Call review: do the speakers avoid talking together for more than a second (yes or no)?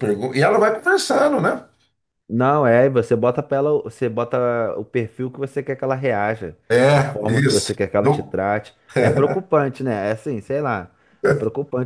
no